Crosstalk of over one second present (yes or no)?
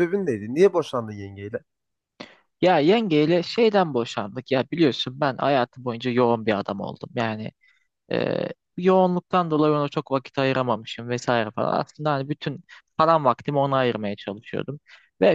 no